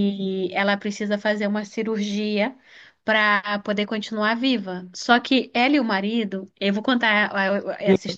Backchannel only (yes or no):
yes